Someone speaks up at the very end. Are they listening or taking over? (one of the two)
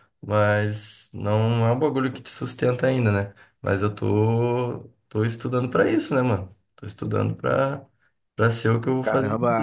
taking over